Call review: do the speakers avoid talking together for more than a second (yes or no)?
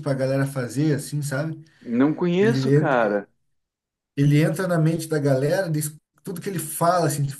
yes